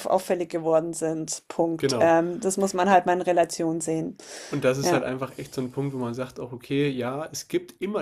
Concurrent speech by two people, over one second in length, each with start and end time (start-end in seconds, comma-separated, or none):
none